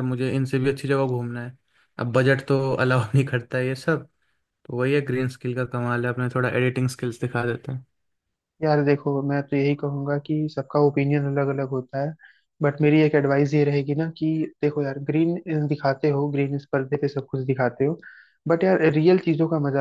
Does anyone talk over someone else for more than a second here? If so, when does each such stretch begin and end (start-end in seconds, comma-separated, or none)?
none